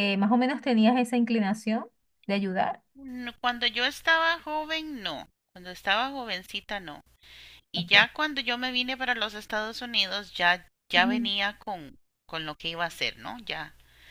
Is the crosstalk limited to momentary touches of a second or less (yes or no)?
yes